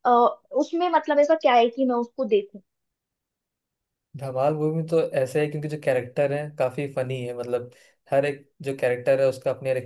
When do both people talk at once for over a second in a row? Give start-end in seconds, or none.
none